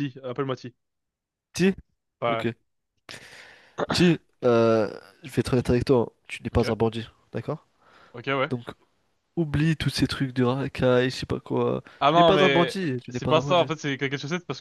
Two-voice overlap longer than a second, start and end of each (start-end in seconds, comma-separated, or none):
12.0-13.7